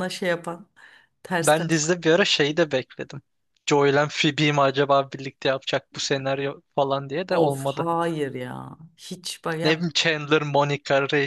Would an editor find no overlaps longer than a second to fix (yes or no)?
yes